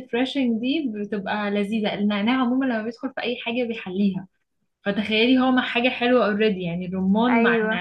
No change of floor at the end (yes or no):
no